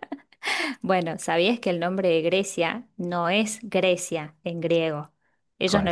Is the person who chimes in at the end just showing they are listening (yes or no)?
yes